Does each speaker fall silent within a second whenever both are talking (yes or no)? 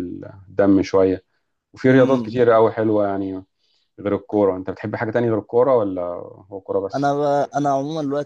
yes